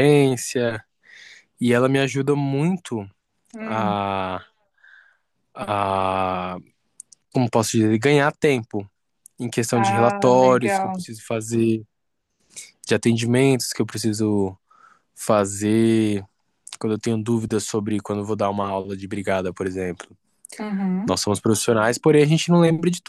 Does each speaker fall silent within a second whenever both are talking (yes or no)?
no